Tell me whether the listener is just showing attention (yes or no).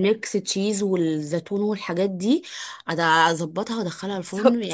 no